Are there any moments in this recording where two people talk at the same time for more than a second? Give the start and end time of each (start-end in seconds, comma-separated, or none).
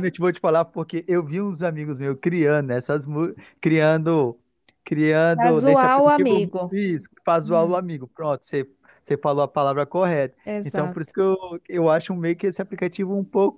5.3-6.8